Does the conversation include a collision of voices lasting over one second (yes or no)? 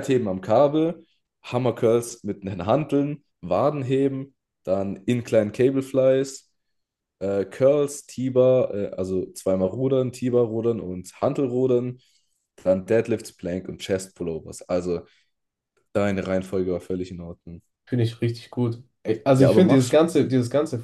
no